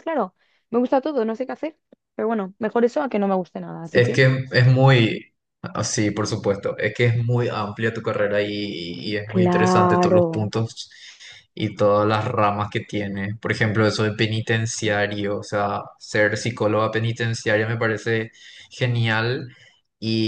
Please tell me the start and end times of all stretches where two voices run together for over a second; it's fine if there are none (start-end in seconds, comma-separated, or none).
9.2-10.5